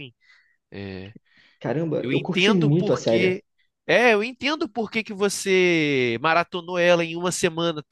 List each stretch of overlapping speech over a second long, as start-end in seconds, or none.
2.0-3.4